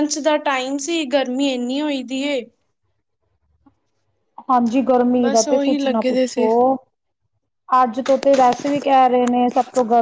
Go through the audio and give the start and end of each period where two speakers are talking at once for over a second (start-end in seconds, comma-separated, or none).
5.2-6.5